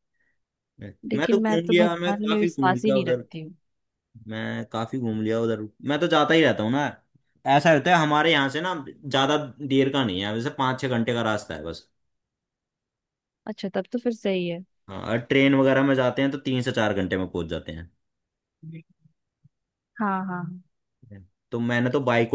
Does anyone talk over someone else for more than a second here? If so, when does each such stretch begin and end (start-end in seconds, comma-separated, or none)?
1.1-3.2